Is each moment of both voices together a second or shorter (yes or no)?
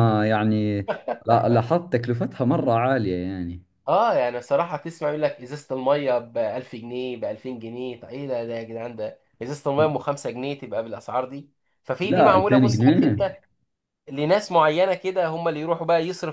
no